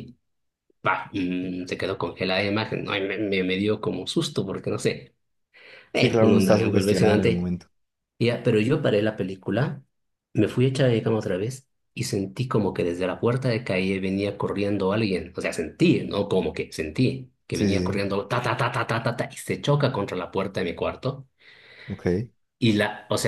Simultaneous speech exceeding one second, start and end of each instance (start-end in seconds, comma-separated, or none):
5.9-7.5